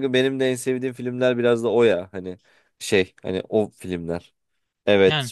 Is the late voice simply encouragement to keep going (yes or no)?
yes